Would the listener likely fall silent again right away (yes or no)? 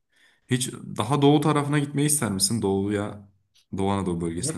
no